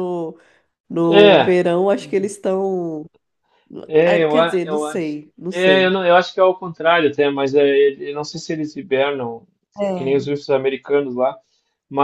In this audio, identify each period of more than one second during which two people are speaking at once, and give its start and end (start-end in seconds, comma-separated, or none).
4.0-6.0